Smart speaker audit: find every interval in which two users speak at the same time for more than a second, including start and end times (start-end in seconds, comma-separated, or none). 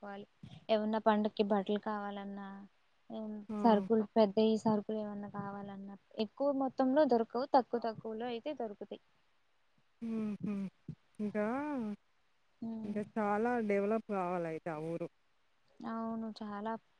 none